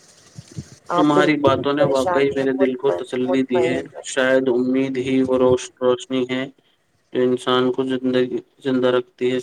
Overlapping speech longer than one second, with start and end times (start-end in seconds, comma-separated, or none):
0.9-4.0